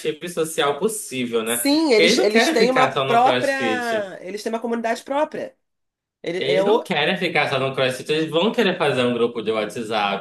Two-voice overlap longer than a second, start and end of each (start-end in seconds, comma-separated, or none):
1.4-3.5